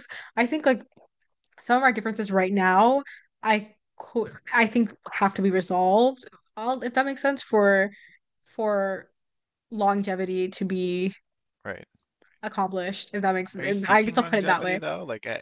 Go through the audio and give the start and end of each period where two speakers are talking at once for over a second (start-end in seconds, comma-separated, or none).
13.6-14.8